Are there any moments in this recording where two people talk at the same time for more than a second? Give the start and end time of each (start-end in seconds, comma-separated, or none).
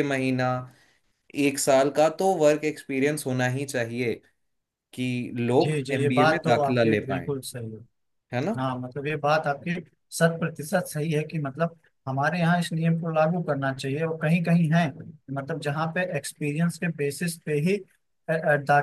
5.6-7.3